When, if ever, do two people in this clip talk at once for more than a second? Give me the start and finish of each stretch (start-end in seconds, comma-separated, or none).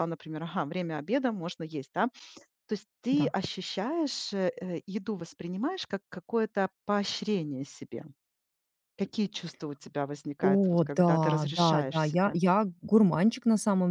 10.4-12.4